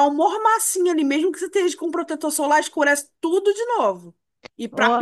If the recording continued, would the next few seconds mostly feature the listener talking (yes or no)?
no